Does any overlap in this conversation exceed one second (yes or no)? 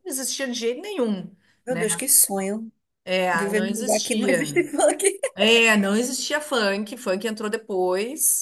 yes